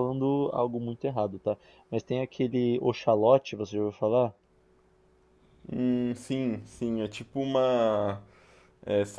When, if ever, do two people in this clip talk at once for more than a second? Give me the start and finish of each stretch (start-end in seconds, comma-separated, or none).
none